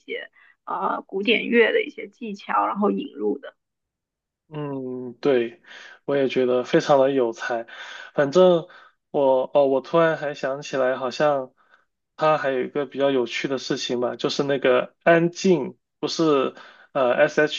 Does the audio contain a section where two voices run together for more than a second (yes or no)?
no